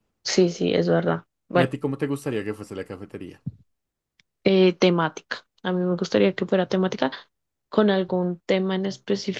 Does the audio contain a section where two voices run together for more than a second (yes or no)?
no